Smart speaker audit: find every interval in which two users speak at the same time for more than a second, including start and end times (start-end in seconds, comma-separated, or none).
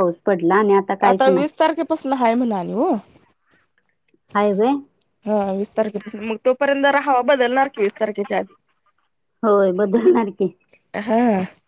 none